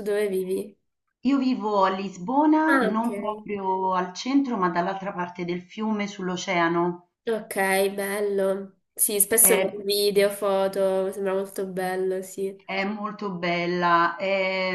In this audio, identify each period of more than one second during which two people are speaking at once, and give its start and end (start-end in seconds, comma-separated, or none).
none